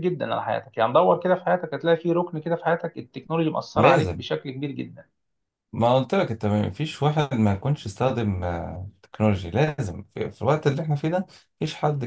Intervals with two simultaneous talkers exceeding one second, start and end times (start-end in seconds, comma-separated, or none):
none